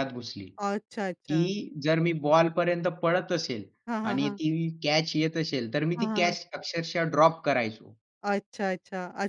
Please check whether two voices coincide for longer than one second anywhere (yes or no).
no